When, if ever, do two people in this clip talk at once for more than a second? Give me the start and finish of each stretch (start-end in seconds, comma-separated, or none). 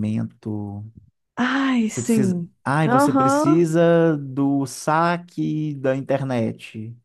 1.9-3.6